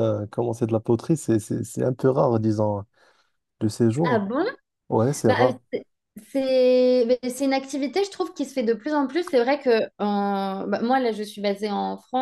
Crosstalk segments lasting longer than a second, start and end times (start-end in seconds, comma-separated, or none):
none